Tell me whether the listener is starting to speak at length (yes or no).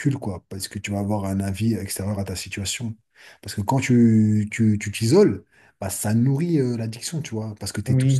yes